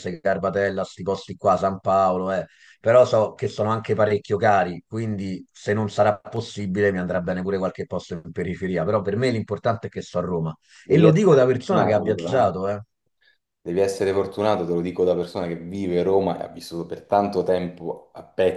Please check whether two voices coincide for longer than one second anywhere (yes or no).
yes